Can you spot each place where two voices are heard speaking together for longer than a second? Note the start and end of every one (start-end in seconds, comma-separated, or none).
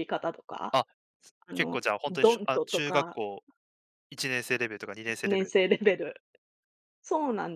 1.5-3.2